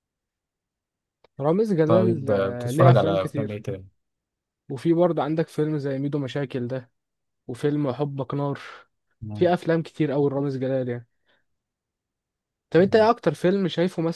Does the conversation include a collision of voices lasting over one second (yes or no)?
yes